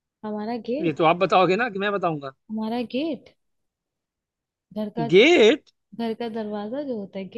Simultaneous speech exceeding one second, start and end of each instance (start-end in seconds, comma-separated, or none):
none